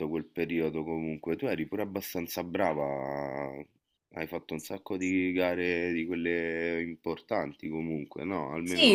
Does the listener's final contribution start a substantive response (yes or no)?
yes